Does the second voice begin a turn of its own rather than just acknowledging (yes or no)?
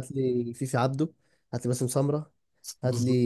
no